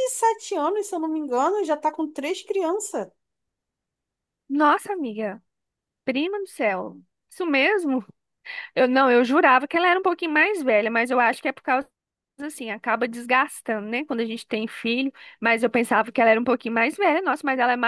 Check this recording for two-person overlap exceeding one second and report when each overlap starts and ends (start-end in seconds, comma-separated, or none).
none